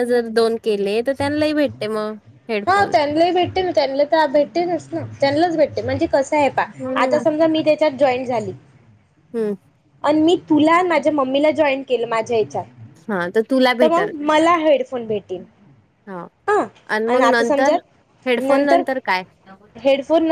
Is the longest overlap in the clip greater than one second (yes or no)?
no